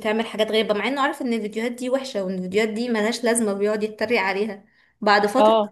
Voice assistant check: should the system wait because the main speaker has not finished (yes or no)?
yes